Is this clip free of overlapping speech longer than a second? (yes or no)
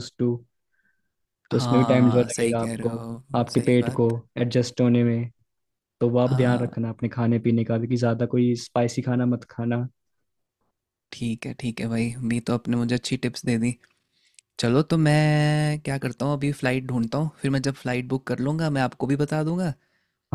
no